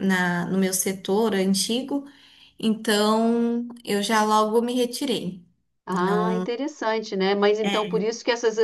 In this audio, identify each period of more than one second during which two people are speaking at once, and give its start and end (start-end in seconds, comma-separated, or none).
none